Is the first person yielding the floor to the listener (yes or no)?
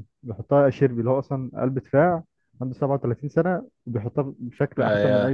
yes